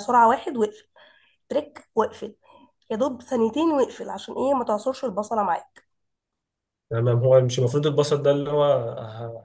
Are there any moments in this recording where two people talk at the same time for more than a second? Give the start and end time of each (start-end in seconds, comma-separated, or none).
none